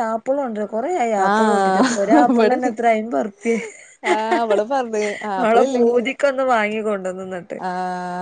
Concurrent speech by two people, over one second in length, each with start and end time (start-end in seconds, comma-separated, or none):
1.3-2.7